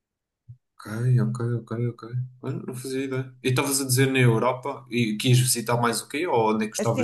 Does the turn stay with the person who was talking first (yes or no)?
no